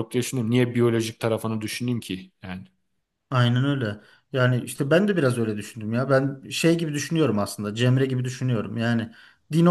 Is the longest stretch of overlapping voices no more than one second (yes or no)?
yes